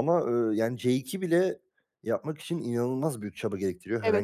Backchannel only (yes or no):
no